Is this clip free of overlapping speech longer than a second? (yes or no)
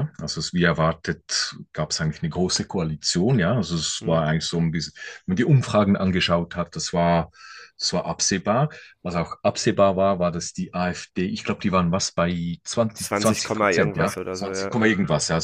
no